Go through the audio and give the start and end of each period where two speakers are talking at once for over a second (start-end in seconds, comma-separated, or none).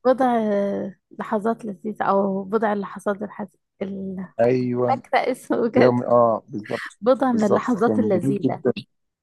7.0-8.6